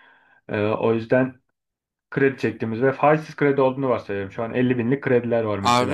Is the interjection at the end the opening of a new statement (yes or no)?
yes